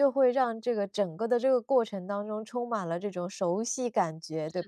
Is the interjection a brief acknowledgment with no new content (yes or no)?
no